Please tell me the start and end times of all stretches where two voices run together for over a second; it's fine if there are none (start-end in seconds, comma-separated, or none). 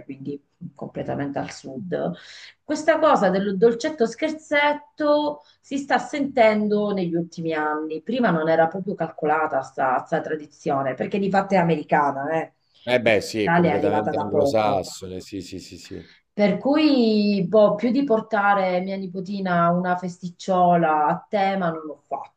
13.0-14.9